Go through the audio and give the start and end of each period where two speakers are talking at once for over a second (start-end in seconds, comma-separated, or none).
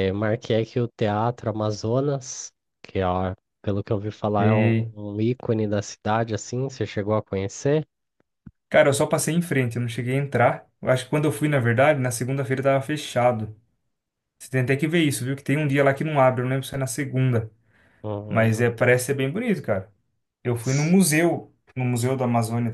none